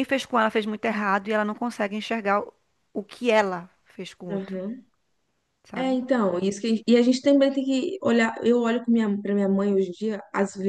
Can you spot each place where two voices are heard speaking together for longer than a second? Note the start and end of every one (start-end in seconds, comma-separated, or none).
none